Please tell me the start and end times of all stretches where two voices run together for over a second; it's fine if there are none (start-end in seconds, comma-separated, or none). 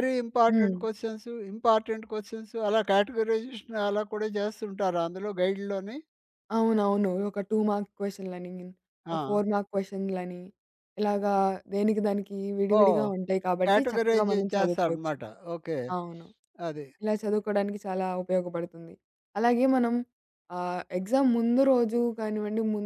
13.7-15.1